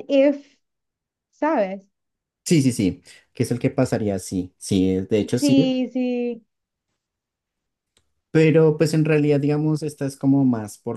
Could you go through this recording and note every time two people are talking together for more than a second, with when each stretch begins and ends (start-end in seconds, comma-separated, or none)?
none